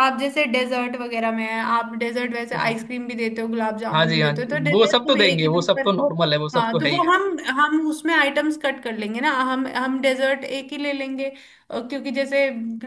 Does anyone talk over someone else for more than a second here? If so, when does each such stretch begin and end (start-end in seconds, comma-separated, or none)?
3.9-5.9